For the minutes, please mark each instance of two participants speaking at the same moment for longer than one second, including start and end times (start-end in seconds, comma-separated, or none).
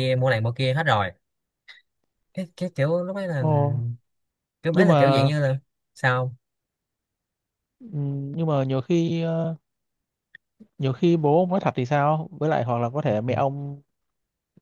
none